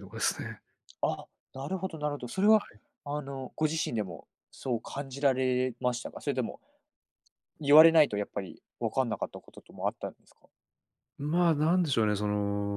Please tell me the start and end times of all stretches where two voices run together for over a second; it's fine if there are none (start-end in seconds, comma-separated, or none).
none